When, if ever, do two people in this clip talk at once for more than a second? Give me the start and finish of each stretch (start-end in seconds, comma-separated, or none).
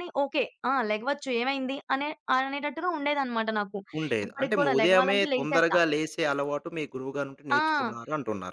4.3-5.8